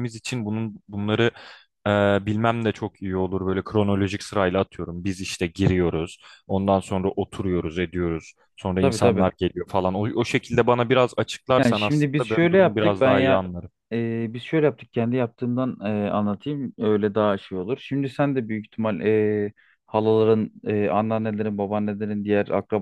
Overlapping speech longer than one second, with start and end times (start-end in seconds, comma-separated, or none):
11.6-13.4